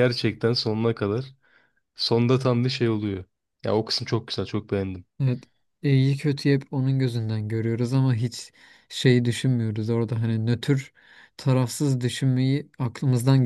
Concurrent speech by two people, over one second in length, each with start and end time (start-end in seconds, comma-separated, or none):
none